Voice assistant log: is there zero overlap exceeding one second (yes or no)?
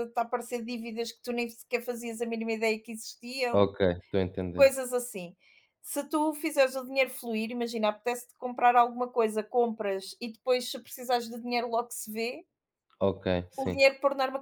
yes